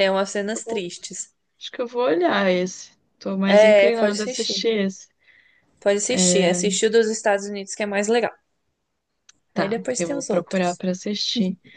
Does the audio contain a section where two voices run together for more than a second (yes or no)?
yes